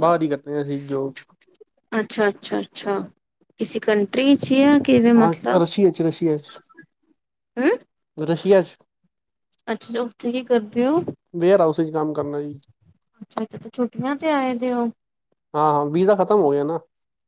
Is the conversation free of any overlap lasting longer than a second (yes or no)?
yes